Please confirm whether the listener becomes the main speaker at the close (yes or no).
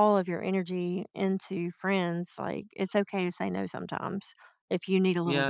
yes